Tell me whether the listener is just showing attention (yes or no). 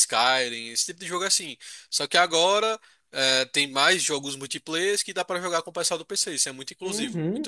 no